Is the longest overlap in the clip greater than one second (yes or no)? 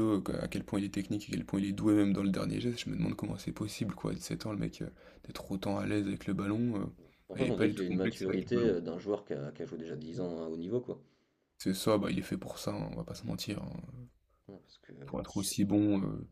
yes